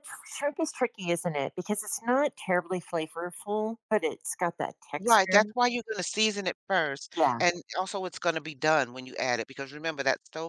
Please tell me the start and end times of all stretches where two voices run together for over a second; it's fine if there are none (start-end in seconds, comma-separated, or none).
none